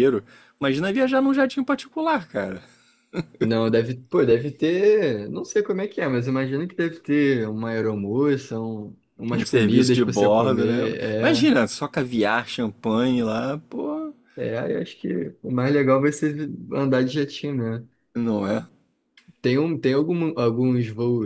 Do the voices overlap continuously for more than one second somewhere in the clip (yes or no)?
yes